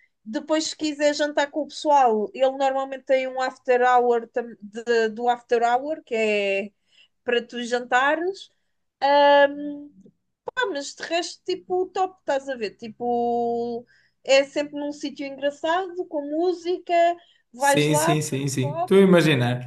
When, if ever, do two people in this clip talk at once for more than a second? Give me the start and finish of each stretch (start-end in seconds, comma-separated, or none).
17.6-19.1